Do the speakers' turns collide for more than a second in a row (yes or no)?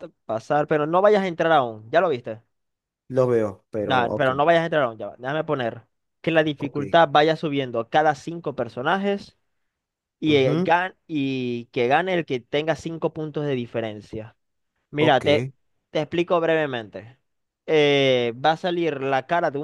no